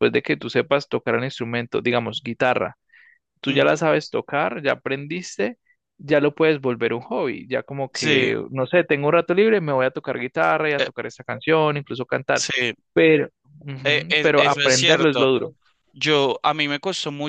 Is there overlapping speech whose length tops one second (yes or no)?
yes